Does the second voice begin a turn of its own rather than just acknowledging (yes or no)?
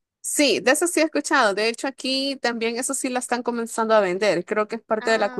no